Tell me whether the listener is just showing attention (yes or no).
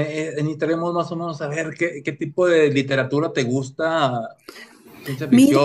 yes